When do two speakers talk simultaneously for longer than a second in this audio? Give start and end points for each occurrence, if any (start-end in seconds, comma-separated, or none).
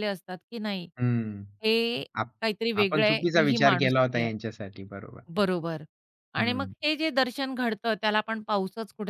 2.8-4.3